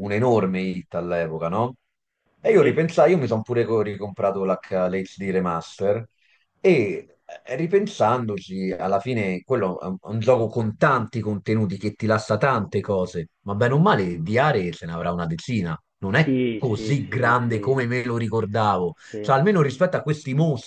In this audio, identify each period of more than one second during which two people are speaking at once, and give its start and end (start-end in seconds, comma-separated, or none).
16.2-17.8